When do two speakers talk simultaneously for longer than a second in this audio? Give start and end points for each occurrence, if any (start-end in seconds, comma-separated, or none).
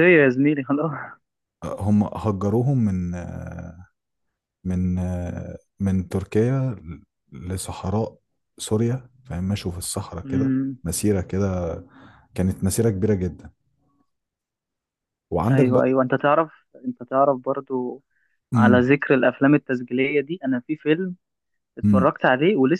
none